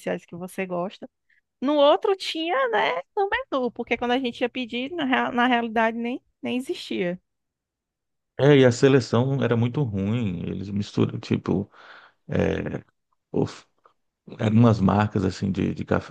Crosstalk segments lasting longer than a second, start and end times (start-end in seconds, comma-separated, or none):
none